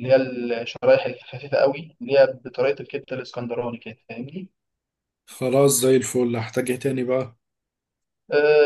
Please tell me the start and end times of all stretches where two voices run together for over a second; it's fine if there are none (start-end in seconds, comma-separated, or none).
none